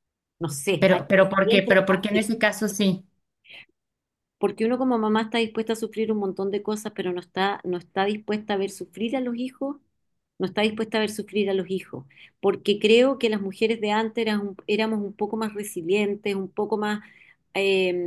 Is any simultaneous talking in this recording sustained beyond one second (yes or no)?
yes